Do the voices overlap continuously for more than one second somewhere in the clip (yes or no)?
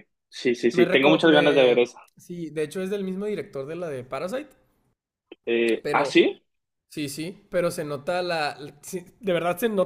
yes